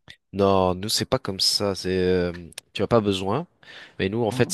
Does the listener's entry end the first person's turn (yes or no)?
no